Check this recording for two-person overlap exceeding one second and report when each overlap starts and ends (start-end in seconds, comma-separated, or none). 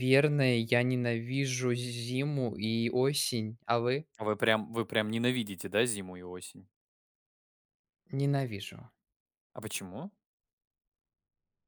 none